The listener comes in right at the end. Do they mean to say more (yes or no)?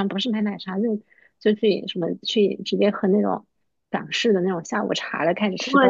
no